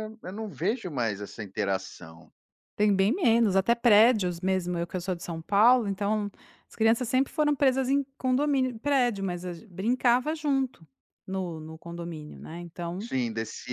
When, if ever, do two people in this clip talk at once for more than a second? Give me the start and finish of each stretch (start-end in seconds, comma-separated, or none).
none